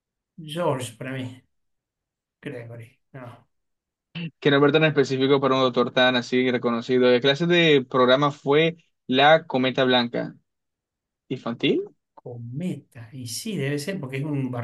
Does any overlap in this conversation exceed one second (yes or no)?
no